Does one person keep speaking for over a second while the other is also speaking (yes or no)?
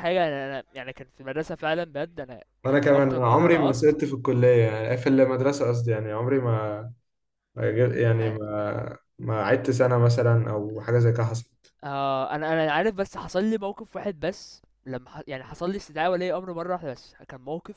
yes